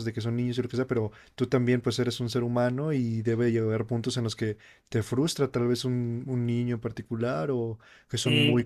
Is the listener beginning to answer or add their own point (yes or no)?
yes